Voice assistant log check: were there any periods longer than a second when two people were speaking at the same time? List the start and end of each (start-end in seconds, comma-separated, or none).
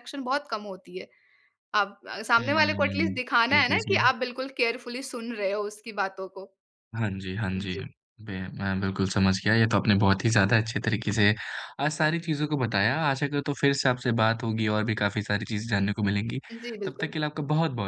2.4-4.0